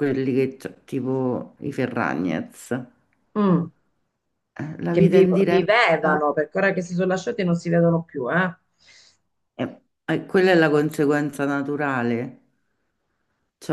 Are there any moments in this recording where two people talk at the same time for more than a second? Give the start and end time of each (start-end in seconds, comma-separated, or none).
4.9-6.3